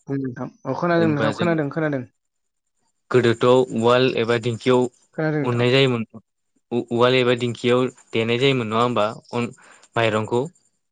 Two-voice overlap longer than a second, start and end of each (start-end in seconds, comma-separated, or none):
none